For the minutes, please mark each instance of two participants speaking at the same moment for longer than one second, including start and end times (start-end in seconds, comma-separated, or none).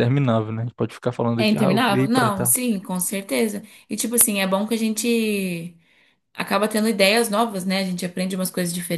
1.4-2.6